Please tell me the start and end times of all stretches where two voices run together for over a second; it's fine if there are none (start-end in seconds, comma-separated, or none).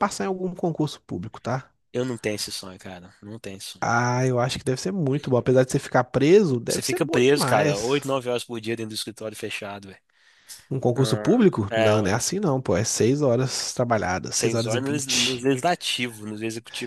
6.7-8.1, 10.7-12.2, 14.3-15.5